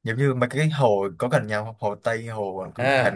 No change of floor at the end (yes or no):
no